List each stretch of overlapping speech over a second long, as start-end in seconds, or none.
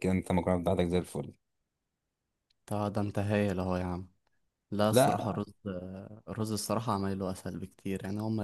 none